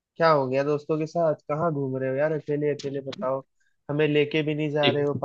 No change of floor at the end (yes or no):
yes